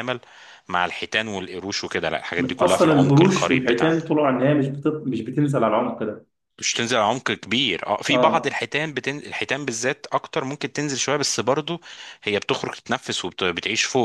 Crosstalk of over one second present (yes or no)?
yes